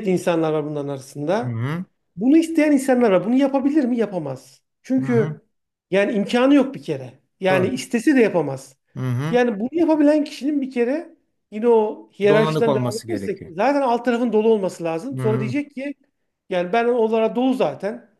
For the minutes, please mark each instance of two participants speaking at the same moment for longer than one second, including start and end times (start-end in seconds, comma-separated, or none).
12.3-13.5